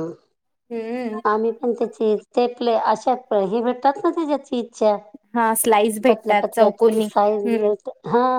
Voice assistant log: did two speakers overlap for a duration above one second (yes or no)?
yes